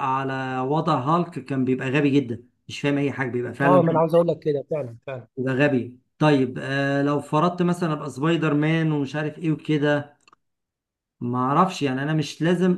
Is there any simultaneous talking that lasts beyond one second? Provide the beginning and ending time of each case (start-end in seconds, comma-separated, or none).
none